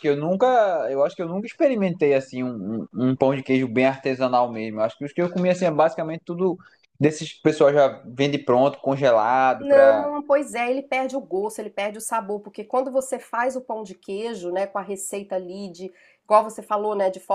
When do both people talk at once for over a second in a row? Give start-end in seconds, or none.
none